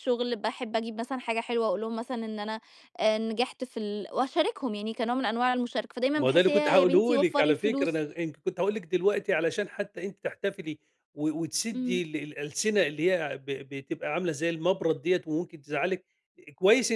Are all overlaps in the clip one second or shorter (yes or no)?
no